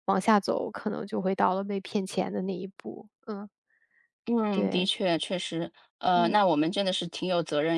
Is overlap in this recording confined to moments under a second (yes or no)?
yes